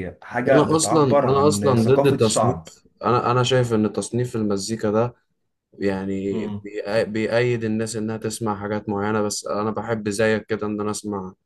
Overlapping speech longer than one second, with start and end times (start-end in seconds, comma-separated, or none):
0.5-2.6